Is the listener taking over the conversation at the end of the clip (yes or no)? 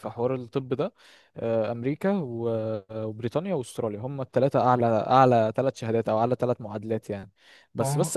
no